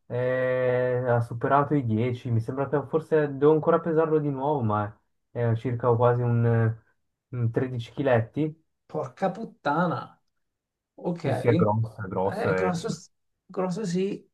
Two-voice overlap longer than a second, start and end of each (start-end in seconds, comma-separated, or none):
11.2-12.7